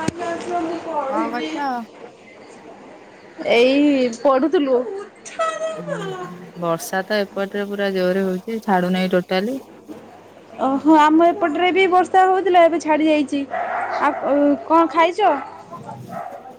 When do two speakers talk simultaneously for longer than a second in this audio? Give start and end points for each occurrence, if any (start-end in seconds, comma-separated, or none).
none